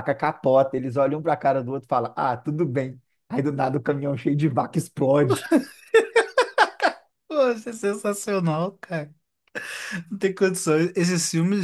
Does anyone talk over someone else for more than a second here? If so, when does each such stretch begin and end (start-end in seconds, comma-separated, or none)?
none